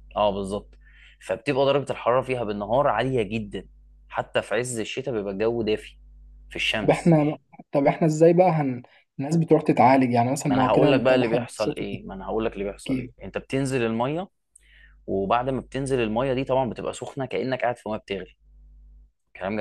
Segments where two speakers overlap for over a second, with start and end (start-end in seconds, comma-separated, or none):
10.5-11.8